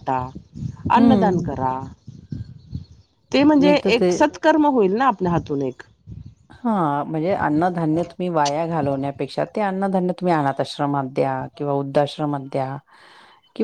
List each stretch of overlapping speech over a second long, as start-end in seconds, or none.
none